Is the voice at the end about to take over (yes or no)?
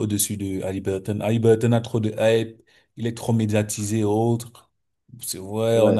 no